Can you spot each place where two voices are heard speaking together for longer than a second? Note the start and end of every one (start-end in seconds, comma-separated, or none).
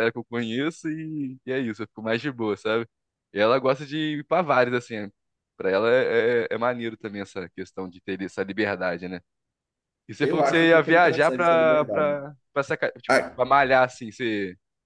10.2-12.2